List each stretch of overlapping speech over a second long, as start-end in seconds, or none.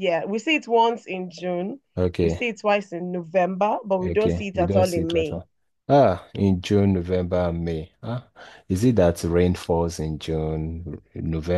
4.0-5.4